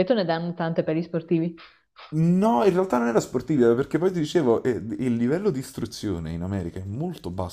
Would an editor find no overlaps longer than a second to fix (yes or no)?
yes